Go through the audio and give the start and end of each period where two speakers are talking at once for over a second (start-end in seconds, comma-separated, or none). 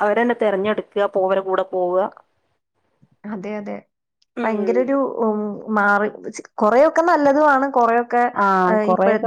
none